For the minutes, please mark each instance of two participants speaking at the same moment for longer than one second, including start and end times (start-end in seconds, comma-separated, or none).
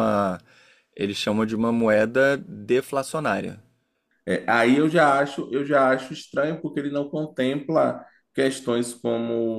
none